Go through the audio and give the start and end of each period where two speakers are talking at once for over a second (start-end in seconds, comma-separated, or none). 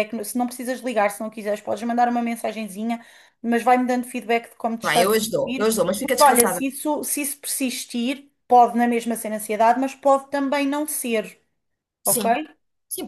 4.8-6.6